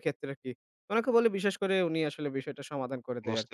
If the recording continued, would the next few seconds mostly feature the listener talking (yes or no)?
yes